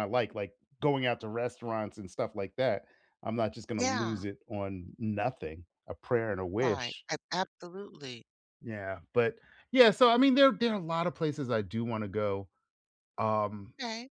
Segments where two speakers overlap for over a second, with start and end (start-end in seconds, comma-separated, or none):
none